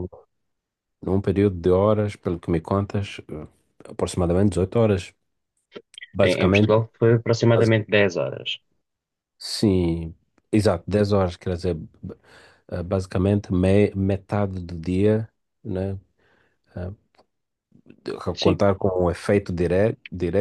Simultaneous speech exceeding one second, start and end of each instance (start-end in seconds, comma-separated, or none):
none